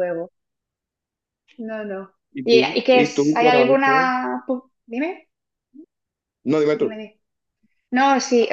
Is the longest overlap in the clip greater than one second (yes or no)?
yes